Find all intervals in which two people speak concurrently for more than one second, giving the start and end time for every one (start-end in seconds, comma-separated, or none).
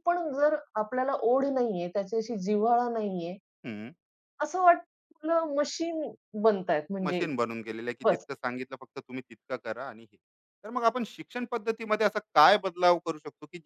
none